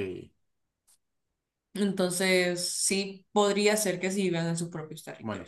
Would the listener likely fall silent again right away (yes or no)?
no